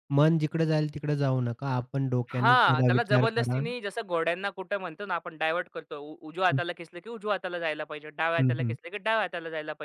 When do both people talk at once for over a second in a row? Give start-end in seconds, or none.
2.3-3.6